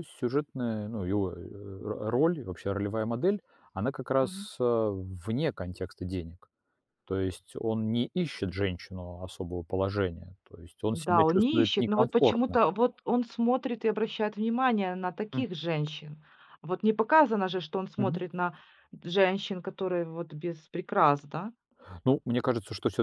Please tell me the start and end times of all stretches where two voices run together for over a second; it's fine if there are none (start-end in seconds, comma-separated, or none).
10.9-12.6